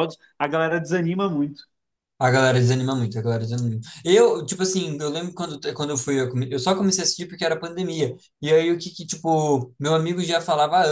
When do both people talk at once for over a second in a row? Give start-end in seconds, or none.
none